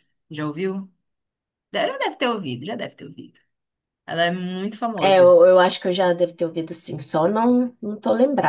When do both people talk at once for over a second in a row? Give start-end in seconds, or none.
none